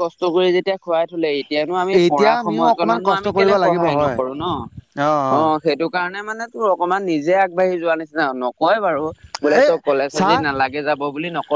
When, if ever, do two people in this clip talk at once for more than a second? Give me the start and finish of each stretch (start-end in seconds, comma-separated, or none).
2.0-4.2